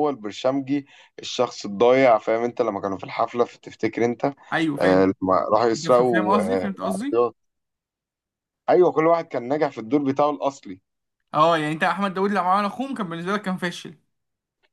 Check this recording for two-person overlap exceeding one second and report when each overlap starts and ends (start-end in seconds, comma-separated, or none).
5.8-7.2